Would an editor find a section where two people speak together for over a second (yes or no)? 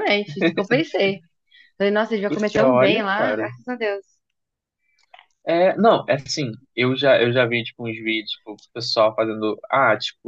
yes